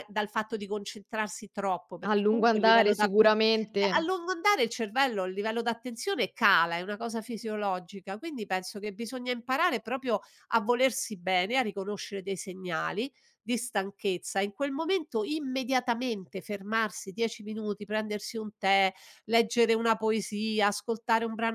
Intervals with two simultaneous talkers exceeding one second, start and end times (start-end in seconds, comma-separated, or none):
2.0-3.4